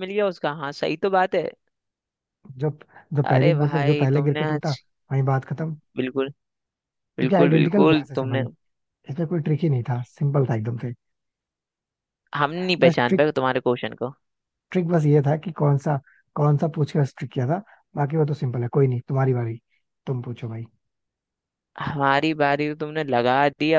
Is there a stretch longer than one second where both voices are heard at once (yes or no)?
yes